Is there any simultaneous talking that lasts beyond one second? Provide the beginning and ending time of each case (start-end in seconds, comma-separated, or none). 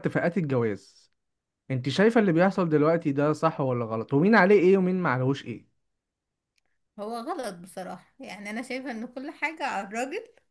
none